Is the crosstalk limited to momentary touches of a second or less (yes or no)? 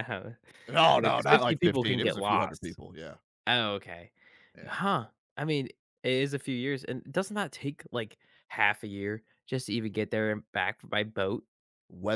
no